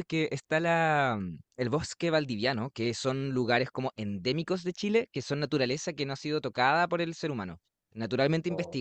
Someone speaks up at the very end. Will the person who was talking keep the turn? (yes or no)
yes